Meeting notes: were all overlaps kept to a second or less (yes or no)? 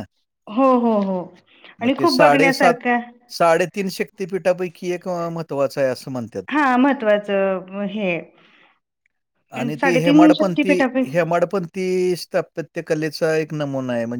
no